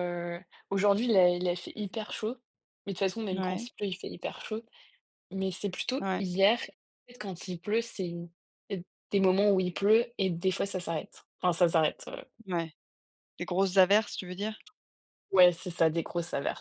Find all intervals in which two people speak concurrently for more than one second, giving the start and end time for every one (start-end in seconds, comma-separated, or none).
none